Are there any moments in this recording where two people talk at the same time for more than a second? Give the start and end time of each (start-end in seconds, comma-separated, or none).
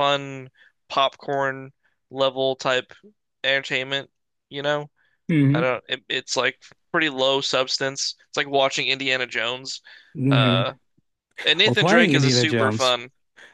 11.7-12.9